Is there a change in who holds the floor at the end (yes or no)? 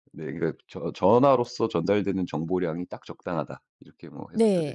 yes